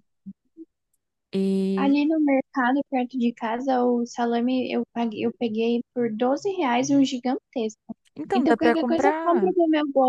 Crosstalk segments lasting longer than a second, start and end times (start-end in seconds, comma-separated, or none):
8.3-9.6